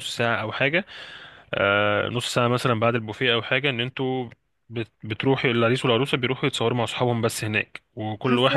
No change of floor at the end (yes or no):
no